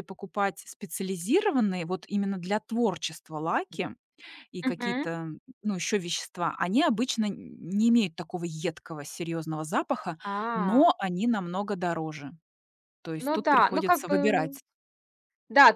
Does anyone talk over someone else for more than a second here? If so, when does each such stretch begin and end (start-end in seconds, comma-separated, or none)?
13.2-14.6